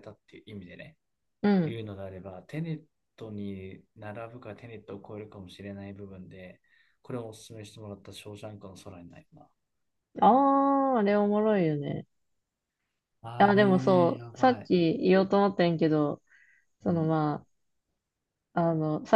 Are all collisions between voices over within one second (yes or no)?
no